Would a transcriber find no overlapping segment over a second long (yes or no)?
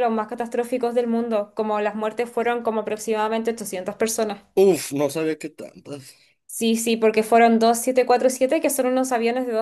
yes